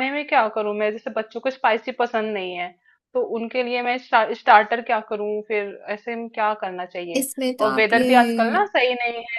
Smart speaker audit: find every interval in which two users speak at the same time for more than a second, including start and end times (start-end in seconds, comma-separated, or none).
7.2-8.7